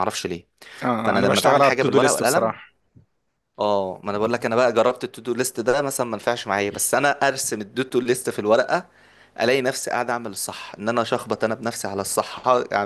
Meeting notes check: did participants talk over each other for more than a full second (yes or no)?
yes